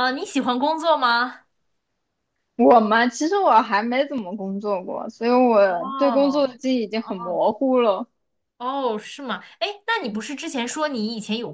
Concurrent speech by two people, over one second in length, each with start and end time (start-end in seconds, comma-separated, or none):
5.6-7.4